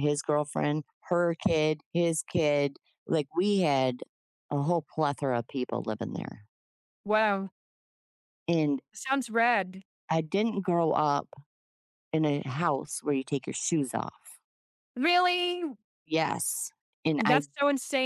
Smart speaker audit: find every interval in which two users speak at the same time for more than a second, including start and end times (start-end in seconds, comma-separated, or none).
none